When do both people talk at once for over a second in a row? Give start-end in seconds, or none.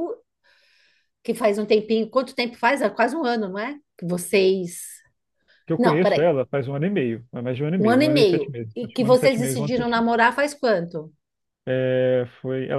7.8-10.1